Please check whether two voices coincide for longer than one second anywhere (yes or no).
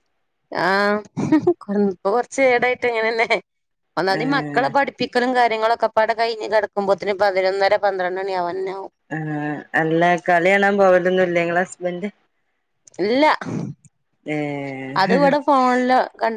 no